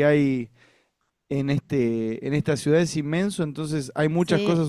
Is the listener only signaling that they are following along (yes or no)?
yes